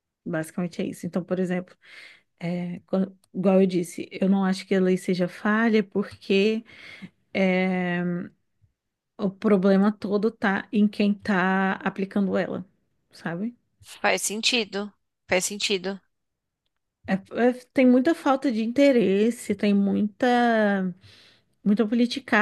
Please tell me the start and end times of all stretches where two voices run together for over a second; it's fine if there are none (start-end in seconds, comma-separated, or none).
none